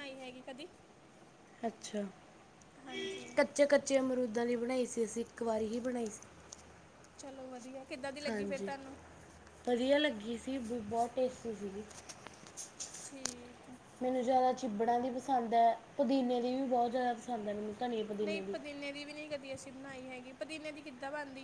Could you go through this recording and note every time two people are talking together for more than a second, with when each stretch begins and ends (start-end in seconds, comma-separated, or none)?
none